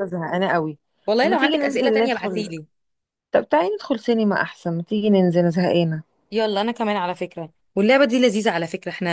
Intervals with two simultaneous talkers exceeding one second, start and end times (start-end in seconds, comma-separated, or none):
1.2-2.5